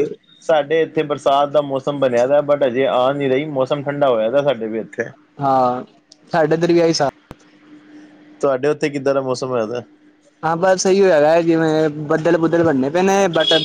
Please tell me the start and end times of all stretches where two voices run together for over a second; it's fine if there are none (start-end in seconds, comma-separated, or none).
none